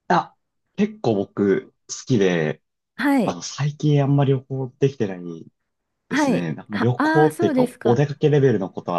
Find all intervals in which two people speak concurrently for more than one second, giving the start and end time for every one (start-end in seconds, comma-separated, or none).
6.1-8.0